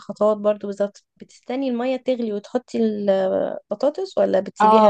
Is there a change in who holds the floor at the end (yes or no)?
yes